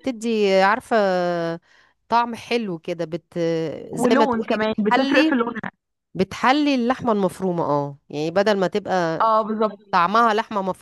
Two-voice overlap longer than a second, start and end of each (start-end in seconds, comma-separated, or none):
3.9-5.3